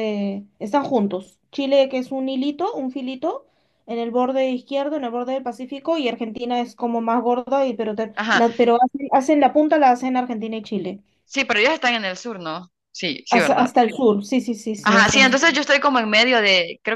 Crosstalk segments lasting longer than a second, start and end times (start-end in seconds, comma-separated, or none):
none